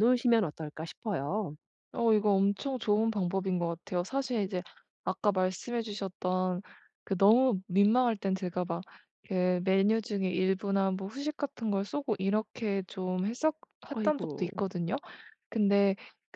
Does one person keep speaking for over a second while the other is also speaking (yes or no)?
no